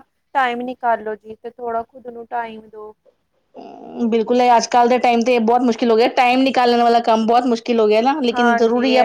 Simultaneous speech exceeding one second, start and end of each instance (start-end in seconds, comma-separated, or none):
none